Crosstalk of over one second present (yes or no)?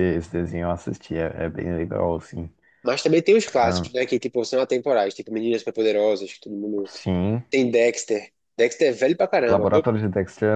no